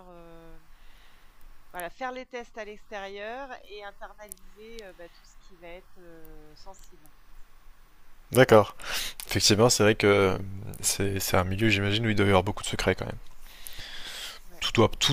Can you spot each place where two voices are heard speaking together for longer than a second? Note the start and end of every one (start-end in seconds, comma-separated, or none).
none